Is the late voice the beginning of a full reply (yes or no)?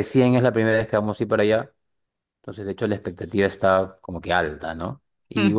no